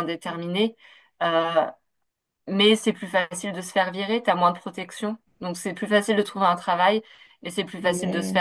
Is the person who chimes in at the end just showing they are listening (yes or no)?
yes